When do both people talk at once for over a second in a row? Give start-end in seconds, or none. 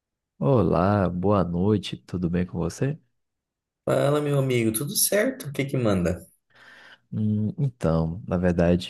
none